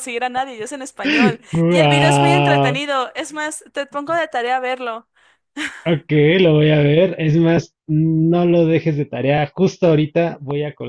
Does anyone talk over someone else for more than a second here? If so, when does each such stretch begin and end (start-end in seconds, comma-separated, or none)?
1.5-2.8